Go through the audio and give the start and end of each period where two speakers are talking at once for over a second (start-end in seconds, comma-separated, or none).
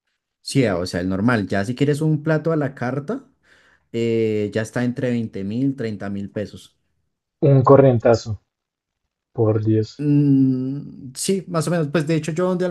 none